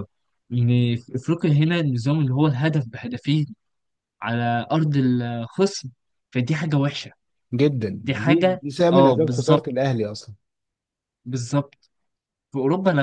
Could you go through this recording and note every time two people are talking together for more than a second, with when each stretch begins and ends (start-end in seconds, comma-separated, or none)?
8.0-9.7